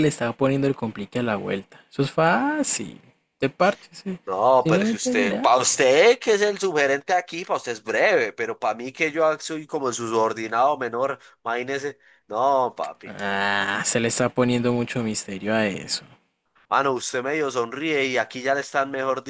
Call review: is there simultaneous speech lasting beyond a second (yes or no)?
yes